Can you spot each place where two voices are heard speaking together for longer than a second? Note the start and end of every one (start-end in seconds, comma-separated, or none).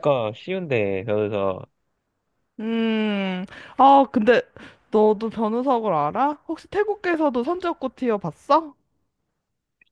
none